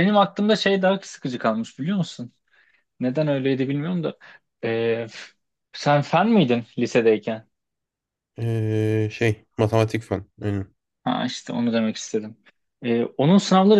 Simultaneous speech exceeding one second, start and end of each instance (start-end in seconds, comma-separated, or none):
none